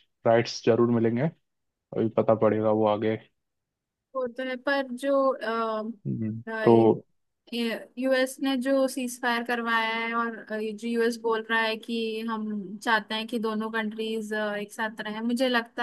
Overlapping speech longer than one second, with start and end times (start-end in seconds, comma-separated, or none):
none